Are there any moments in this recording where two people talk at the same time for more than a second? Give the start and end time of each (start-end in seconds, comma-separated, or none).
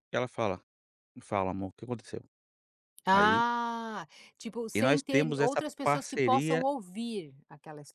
4.7-6.6